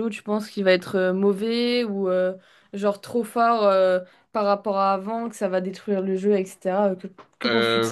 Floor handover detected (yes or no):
yes